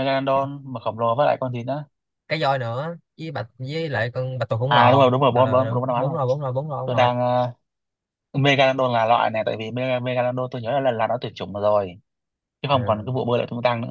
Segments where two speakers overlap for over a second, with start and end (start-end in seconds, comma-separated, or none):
4.6-6.2